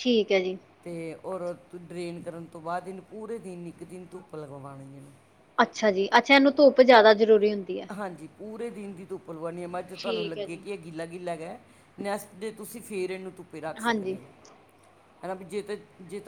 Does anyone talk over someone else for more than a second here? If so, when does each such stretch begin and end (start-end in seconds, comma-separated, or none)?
none